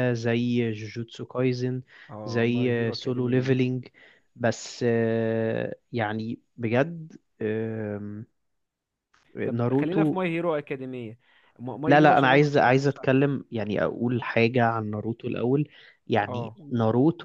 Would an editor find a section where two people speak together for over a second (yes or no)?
yes